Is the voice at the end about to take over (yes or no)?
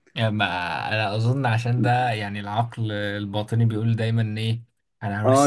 yes